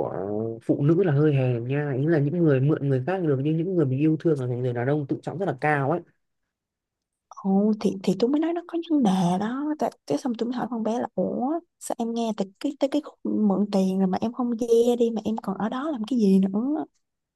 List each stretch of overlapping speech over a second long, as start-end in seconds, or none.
none